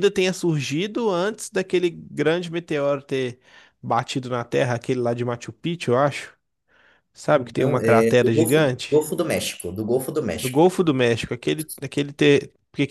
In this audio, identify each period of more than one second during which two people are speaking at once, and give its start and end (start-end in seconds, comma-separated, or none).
7.6-9.0